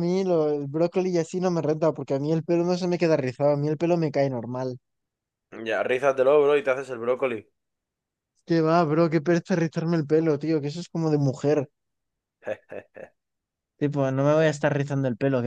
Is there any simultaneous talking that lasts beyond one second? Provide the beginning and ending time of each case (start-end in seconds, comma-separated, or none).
none